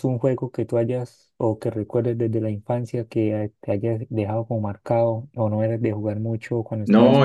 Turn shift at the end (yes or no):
yes